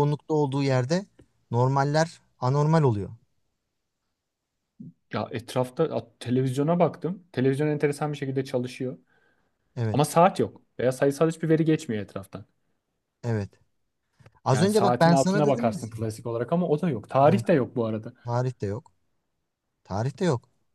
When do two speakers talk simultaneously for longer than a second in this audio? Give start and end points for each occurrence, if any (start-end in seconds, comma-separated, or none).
14.5-15.8